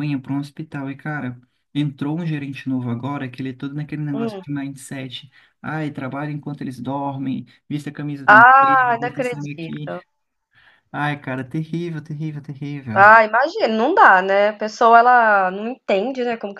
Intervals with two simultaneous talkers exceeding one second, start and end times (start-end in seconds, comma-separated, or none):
8.3-9.9